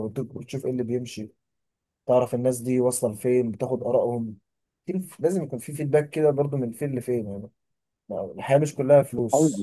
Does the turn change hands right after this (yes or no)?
yes